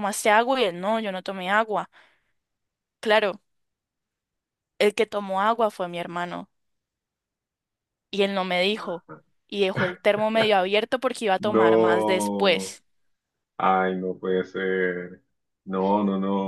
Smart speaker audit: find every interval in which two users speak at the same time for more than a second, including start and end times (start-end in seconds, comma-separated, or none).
11.4-12.8